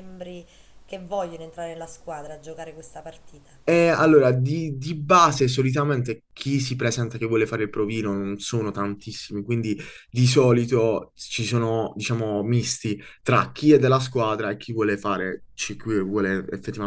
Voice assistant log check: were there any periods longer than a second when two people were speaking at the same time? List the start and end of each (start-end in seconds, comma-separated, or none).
none